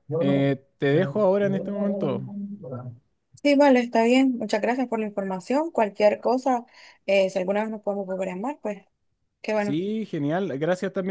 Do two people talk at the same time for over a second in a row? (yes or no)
no